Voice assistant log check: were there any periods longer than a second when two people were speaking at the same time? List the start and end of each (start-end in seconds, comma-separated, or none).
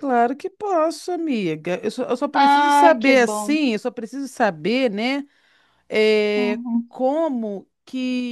2.3-3.6